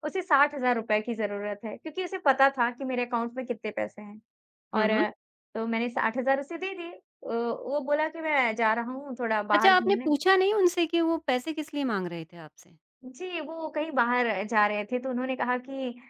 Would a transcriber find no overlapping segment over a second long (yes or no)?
yes